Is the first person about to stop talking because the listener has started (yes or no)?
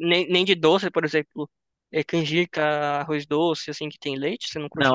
yes